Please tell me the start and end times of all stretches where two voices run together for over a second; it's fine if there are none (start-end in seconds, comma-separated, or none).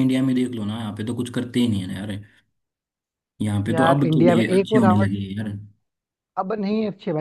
3.7-5.1